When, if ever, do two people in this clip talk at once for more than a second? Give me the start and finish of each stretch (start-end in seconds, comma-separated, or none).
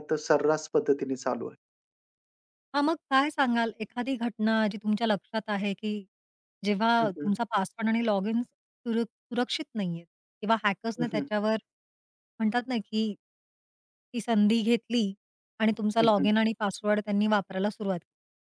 none